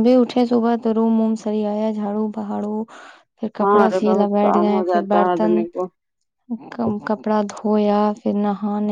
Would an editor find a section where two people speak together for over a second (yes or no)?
yes